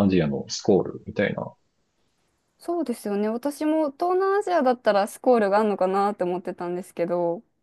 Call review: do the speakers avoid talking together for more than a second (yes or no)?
yes